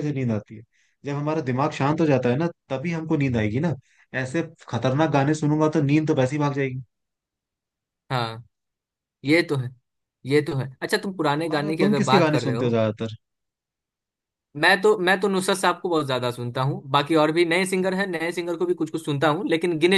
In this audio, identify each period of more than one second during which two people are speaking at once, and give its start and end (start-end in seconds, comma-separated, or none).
11.4-12.8